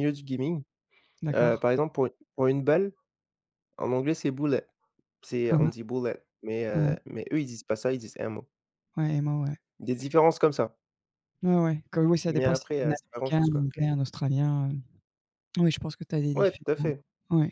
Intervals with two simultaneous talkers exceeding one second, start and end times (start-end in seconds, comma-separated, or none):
12.3-13.7